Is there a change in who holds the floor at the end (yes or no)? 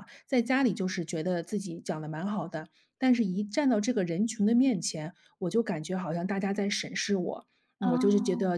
no